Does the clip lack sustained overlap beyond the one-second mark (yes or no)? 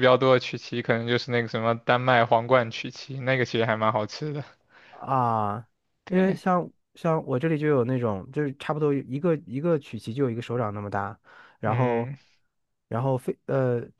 yes